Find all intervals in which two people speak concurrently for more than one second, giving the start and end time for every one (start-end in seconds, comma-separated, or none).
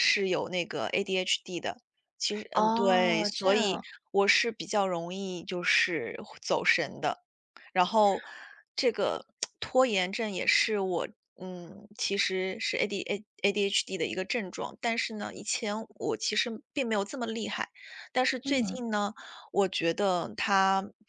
2.5-3.8